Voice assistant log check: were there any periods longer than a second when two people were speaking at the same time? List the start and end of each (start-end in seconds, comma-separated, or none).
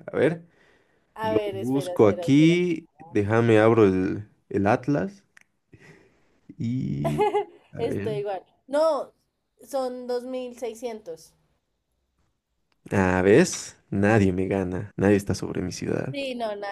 1.2-2.6